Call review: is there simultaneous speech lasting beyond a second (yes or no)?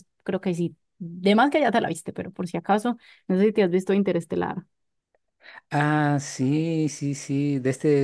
no